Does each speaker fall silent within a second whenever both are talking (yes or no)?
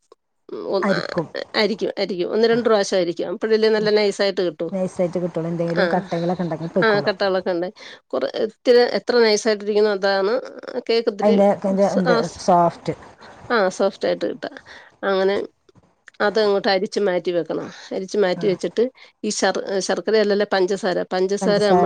yes